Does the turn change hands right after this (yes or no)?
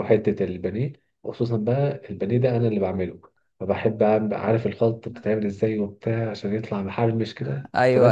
no